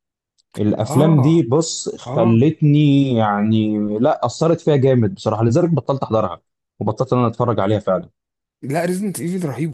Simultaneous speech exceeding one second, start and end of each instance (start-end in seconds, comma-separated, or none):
none